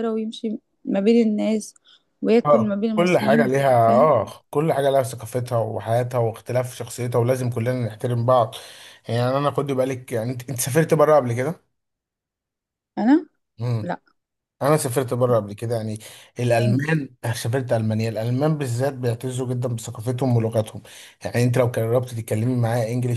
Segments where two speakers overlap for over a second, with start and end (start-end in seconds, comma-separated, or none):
2.4-4.2